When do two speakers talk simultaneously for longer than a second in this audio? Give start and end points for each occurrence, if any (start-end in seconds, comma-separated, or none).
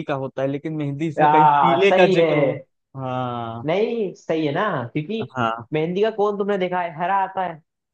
1.2-2.6